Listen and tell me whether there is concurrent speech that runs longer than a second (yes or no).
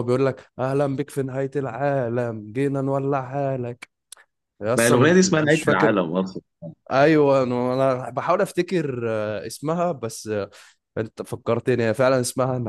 yes